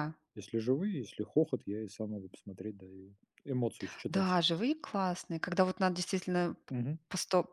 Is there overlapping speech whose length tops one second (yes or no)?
no